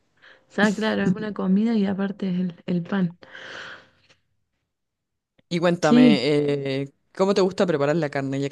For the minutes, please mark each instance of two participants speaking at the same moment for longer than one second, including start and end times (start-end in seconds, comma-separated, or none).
none